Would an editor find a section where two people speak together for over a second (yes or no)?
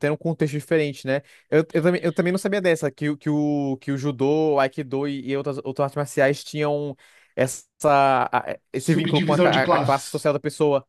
yes